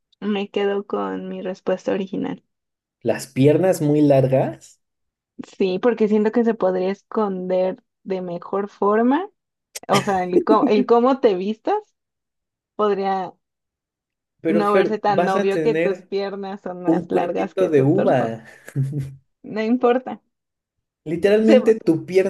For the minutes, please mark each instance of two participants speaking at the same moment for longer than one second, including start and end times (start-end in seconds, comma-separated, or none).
14.5-16.1, 16.9-18.4